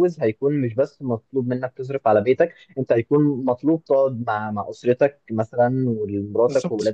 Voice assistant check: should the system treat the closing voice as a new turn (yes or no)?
no